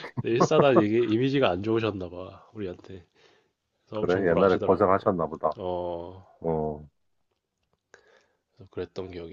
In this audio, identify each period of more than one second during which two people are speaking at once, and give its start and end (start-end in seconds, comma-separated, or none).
3.9-5.2